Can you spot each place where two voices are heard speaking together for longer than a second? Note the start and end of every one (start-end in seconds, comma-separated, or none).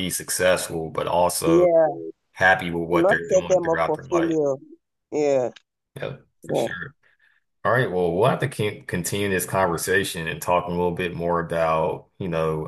3.0-4.4